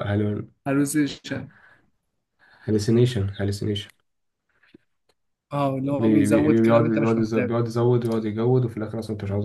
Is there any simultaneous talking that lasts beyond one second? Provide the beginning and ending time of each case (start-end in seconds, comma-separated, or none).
5.9-7.5